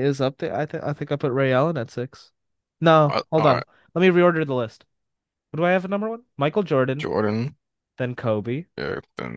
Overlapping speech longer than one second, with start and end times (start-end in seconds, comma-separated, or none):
none